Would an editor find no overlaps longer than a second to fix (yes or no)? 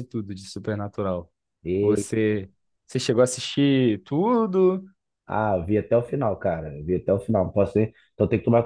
yes